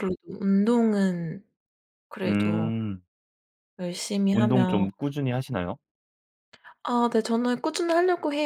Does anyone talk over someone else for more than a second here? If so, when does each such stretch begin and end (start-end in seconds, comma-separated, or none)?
none